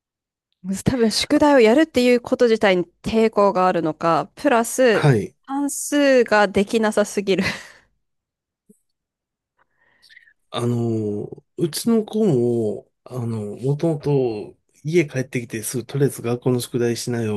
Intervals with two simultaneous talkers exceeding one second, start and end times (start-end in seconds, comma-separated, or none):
none